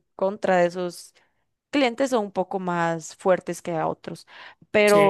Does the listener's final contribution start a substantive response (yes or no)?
yes